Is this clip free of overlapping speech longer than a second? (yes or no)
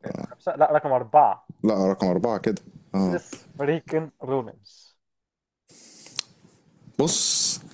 yes